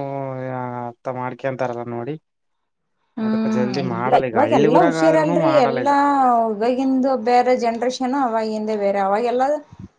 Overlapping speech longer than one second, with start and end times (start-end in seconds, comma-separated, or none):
3.2-5.9